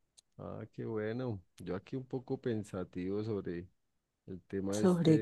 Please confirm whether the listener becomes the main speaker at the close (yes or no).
no